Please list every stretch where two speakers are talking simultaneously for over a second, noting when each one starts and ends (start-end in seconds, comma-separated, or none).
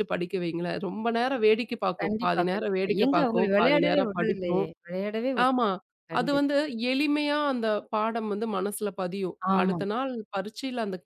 2.0-4.7